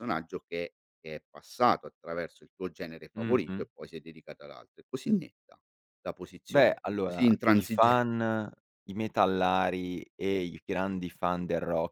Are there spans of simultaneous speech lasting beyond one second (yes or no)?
yes